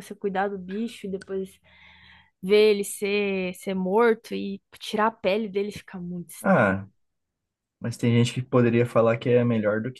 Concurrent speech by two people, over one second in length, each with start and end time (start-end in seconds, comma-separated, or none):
none